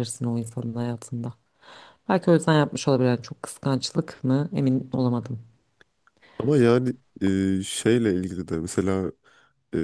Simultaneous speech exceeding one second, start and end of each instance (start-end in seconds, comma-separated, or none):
none